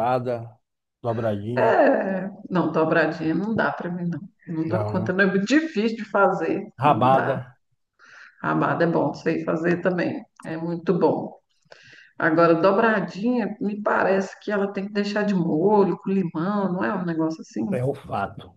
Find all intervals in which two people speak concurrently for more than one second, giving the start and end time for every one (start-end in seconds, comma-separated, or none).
none